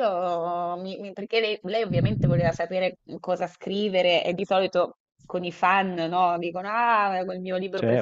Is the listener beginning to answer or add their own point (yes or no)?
yes